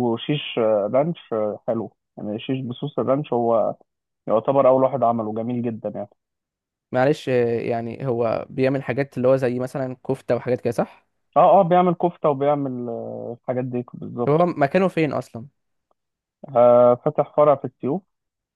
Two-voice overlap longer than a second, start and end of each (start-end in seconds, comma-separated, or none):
none